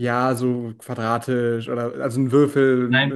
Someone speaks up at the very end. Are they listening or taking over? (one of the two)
listening